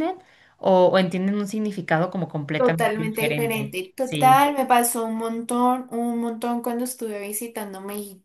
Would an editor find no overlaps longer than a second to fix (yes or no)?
no